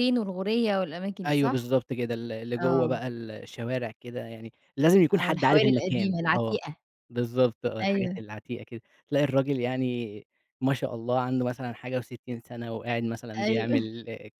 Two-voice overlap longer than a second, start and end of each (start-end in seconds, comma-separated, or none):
5.1-6.6